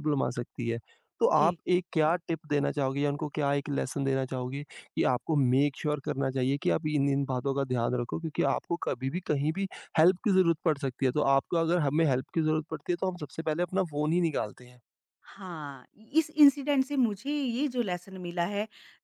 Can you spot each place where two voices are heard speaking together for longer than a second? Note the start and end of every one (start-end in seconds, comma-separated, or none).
none